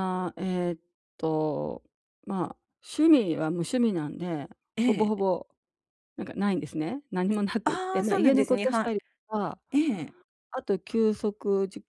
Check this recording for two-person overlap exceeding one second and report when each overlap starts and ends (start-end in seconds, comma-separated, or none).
7.6-8.8